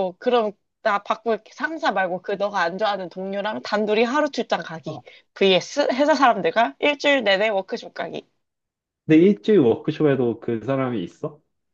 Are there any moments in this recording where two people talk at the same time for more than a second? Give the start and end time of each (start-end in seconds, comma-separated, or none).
none